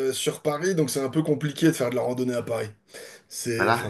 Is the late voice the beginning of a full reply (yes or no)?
yes